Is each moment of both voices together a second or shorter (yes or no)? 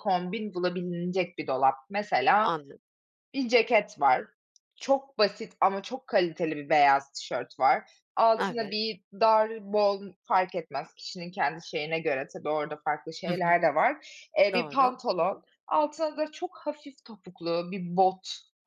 yes